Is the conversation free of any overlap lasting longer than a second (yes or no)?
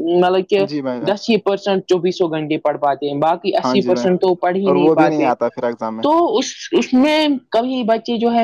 yes